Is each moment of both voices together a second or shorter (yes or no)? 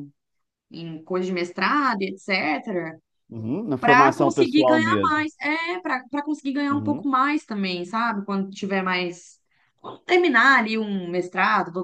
no